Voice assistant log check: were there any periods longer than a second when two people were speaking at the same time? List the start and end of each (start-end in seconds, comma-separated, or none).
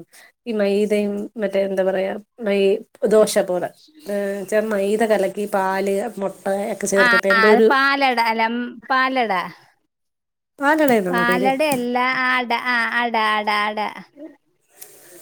none